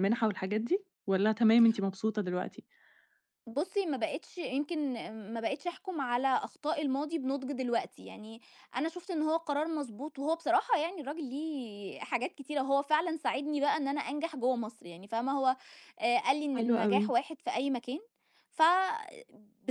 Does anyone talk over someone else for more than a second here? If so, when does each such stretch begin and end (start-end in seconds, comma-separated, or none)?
none